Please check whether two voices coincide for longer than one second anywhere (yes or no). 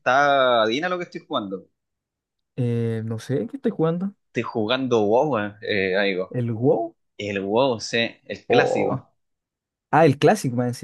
no